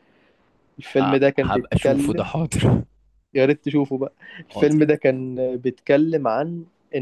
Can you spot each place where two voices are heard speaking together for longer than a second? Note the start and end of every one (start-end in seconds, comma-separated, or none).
1.0-2.3